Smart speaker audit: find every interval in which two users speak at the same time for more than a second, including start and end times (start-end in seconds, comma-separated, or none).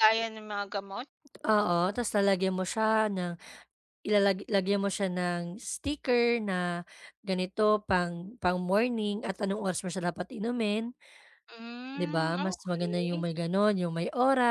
12.0-13.2